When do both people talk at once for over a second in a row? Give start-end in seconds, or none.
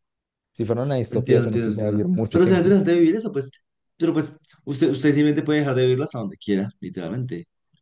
1.1-2.8